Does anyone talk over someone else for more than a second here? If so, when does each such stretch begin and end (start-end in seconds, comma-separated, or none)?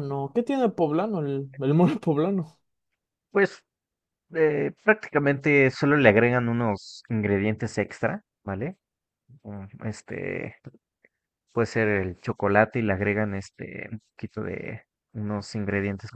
none